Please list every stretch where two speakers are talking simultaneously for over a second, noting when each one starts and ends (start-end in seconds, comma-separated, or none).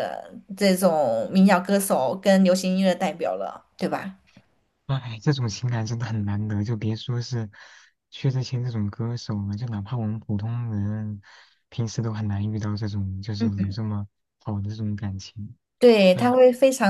none